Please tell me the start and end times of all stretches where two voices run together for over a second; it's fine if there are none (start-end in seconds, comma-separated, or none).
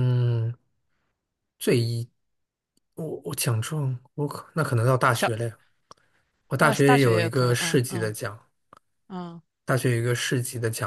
6.6-8.2